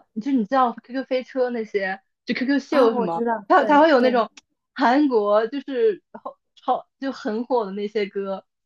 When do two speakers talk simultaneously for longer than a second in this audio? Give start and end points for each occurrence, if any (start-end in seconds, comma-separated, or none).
2.7-4.2